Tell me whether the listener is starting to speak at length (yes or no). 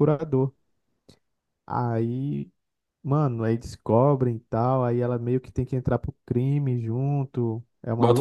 yes